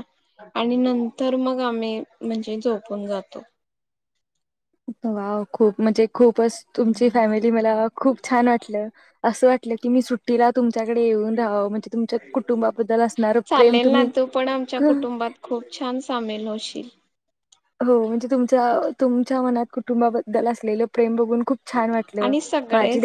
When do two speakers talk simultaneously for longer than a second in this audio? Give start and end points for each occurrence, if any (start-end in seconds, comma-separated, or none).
none